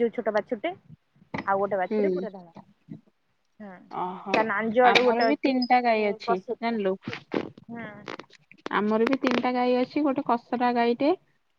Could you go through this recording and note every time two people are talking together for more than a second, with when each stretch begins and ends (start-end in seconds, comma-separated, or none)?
4.9-6.8